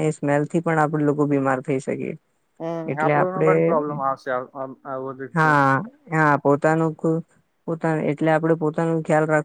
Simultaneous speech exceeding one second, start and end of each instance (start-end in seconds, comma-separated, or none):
none